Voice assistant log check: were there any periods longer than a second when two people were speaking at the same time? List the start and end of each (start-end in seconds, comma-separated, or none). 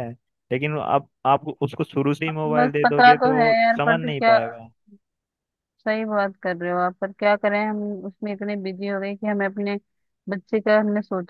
2.5-4.4